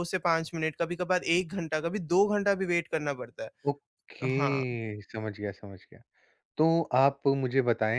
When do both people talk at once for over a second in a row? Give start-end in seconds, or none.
none